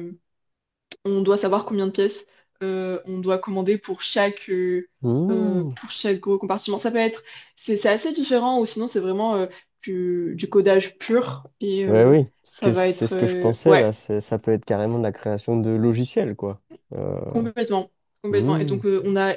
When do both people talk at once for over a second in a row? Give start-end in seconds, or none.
11.8-13.8